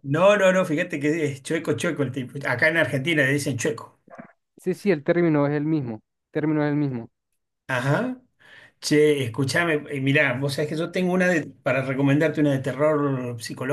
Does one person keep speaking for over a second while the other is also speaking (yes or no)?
no